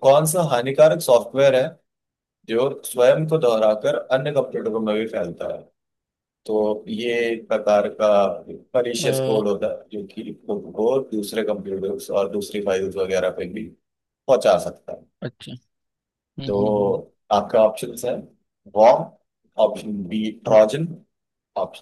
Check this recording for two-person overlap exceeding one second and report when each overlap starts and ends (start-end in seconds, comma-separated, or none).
none